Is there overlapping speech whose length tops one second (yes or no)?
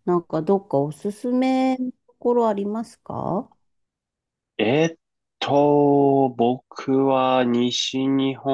no